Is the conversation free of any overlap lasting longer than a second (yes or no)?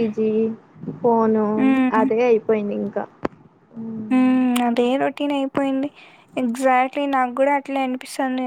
yes